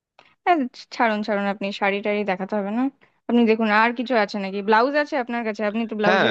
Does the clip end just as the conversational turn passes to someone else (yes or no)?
yes